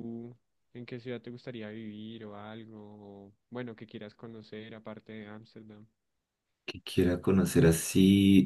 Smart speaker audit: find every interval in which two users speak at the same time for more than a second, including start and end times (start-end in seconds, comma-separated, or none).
none